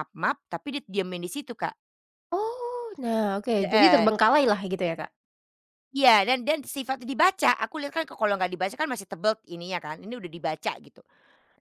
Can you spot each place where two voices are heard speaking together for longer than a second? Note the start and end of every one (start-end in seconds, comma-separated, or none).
none